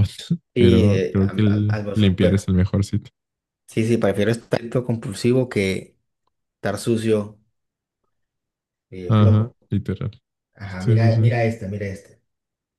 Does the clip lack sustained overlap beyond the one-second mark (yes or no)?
no